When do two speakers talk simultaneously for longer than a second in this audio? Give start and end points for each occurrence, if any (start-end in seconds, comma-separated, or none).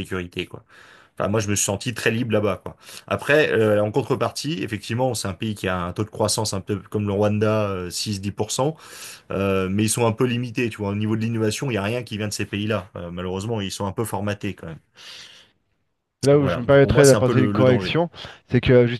16.3-18.0